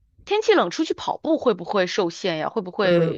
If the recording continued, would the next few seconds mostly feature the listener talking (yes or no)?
yes